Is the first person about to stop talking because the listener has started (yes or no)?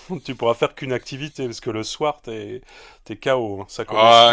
yes